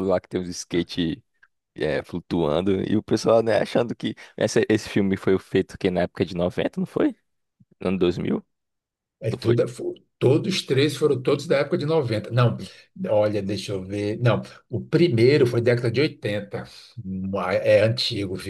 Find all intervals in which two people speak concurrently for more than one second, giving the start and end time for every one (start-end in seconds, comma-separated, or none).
none